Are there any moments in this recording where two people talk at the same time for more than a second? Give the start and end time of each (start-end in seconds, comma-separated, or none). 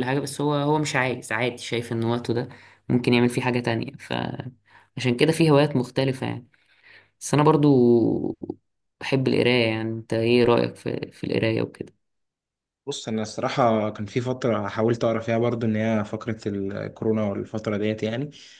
none